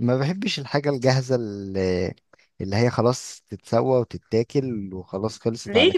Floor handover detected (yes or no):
yes